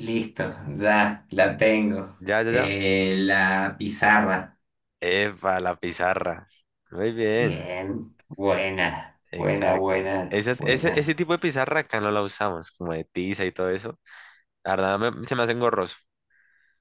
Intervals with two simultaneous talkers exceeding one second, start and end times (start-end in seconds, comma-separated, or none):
9.3-11.2